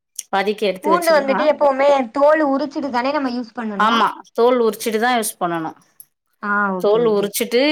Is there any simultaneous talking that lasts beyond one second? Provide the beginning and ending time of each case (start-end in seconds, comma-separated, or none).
none